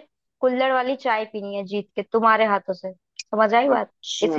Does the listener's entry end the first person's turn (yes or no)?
yes